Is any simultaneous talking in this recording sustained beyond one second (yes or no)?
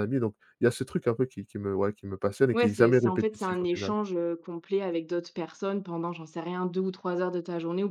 yes